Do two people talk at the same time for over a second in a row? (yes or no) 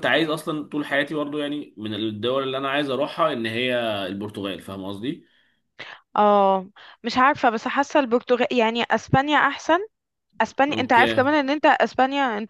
no